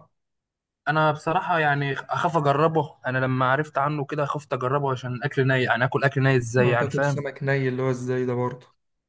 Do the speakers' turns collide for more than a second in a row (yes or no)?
no